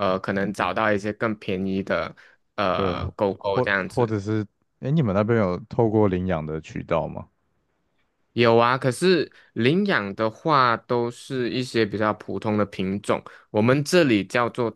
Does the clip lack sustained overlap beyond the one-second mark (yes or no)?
no